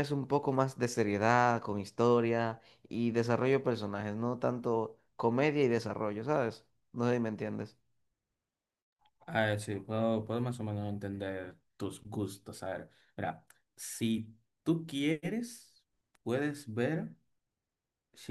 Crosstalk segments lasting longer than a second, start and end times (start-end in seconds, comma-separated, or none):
none